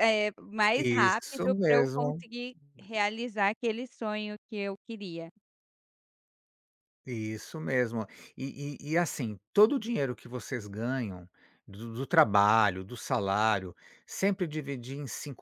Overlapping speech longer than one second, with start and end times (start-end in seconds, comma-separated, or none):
0.8-2.2